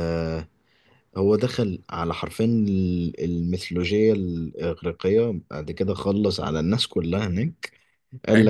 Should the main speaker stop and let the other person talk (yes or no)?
no